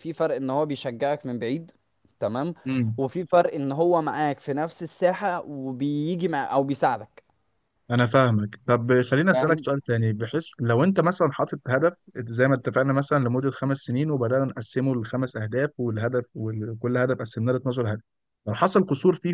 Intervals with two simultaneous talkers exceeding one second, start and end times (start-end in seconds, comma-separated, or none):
none